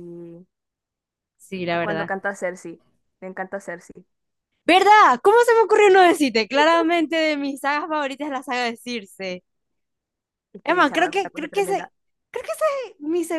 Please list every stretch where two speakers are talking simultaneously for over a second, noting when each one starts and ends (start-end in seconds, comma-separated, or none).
10.6-11.9